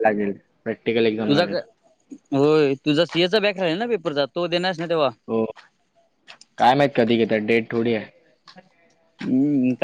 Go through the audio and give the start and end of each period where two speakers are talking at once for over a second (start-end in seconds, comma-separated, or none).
none